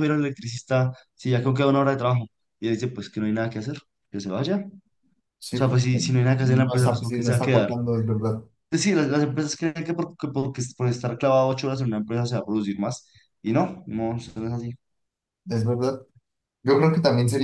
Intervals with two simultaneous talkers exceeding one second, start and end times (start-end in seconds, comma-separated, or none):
5.5-7.7